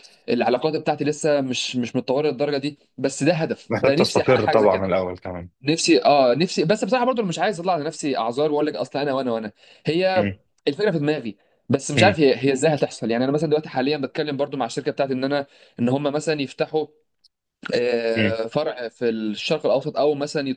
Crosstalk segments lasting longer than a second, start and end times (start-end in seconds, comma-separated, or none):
3.7-4.9